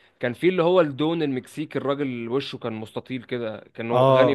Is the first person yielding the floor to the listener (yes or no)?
no